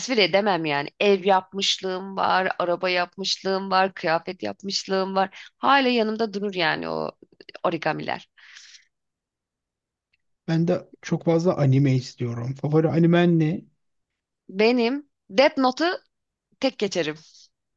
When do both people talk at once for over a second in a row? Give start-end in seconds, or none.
none